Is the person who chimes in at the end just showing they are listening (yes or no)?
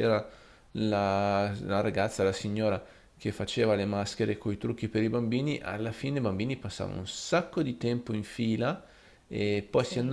yes